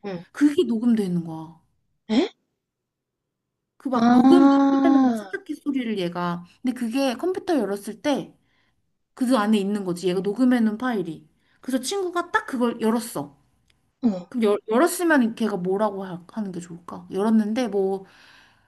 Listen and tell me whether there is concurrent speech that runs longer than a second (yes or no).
yes